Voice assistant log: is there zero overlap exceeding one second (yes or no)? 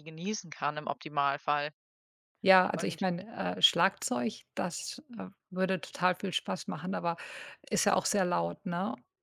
yes